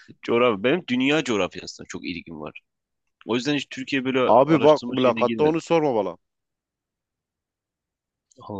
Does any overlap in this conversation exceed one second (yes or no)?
yes